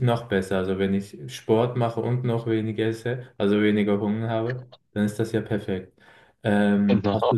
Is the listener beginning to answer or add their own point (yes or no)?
no